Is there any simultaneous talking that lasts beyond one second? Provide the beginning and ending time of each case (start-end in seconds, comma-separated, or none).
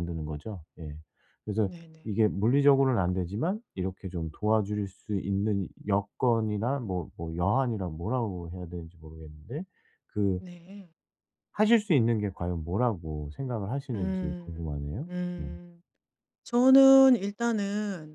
13.9-15.5